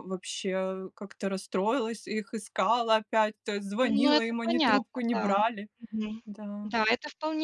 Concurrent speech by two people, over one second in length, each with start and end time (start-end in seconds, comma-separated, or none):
3.8-5.4